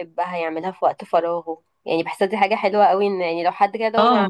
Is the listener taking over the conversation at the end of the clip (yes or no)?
no